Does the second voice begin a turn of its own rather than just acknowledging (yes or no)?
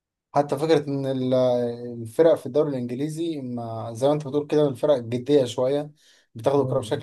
no